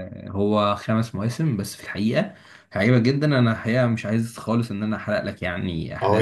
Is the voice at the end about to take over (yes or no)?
yes